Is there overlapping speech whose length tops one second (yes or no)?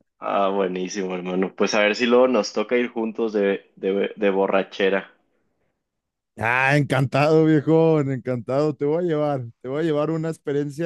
no